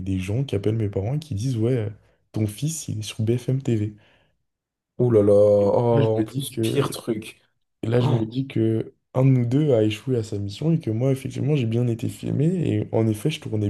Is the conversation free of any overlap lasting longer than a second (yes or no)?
no